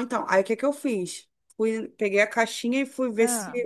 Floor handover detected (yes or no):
no